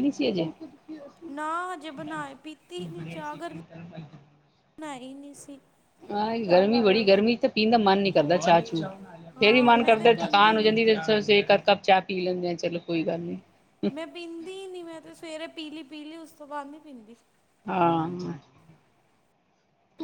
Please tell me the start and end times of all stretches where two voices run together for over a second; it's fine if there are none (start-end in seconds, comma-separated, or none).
9.4-10.7